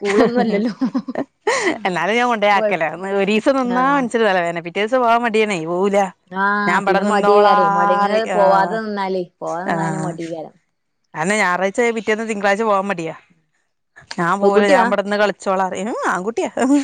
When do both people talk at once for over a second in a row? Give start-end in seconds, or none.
6.7-8.4